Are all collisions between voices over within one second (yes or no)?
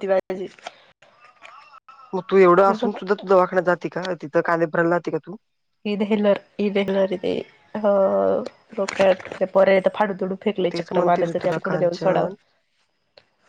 no